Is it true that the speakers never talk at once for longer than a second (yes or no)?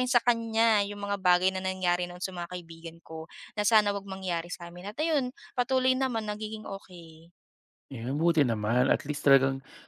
yes